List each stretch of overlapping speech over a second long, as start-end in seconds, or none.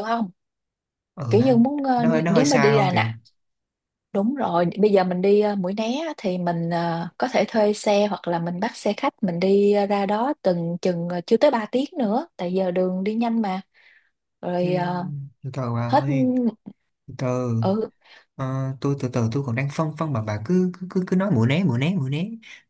1.3-3.1